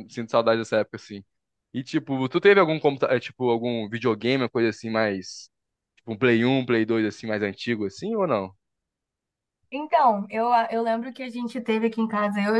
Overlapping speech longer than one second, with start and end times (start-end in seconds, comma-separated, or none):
none